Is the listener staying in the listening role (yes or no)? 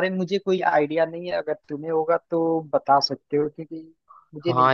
no